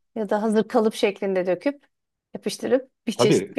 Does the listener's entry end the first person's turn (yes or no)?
yes